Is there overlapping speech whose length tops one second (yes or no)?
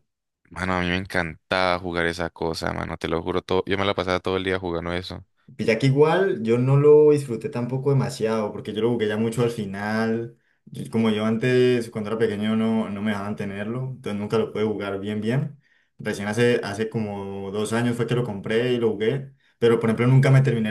no